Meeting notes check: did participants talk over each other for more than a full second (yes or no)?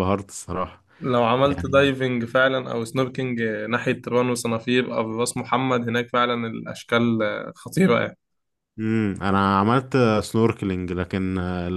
no